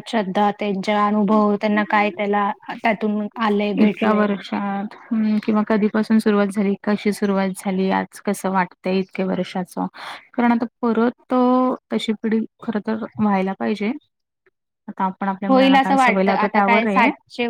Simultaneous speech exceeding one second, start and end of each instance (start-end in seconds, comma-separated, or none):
none